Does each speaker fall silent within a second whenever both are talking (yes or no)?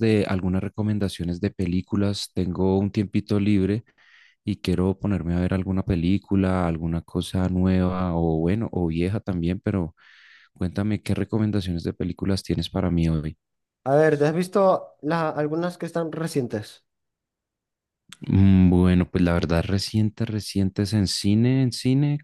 yes